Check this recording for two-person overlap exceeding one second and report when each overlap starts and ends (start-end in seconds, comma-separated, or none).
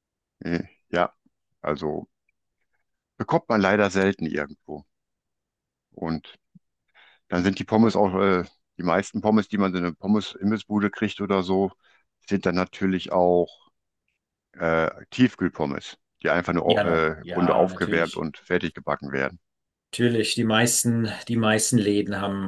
16.6-18.3